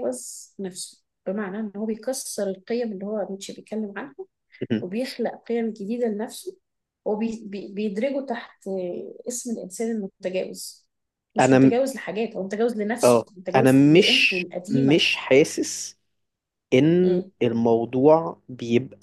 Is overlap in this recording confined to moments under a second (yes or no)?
no